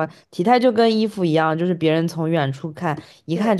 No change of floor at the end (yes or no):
yes